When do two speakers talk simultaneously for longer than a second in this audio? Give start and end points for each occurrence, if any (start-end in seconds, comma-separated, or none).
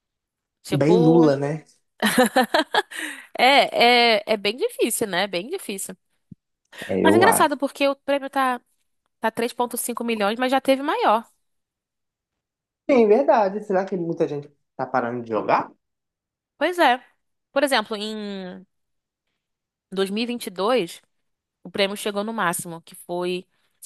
none